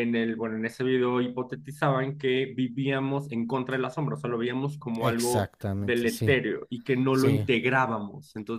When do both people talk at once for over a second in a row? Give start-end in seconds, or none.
5.0-6.4